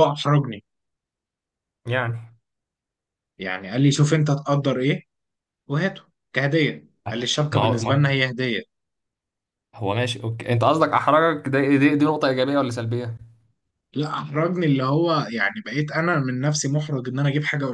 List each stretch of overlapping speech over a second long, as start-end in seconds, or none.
none